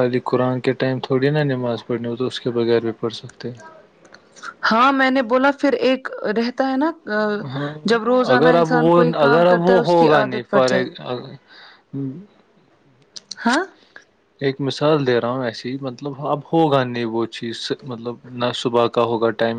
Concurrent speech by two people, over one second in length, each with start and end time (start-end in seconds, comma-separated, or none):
8.3-10.7